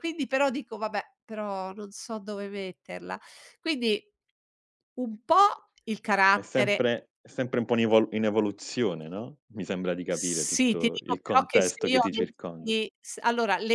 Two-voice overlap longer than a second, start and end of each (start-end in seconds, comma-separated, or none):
10.1-12.7